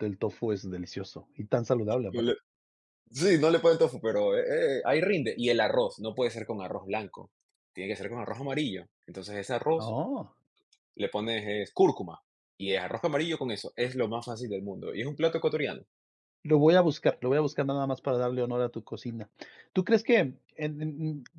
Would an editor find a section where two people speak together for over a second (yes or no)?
no